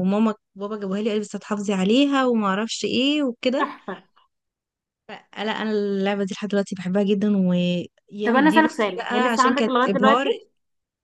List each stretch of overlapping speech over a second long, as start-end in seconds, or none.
8.2-10.3